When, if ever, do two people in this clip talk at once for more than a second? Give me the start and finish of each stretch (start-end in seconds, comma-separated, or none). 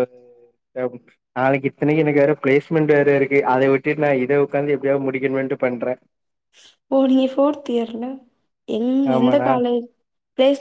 none